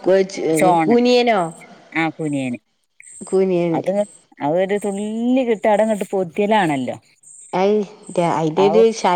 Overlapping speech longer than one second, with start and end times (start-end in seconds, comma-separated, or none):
none